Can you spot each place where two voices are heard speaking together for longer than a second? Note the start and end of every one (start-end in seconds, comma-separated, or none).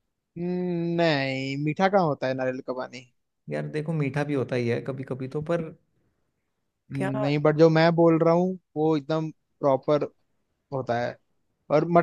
none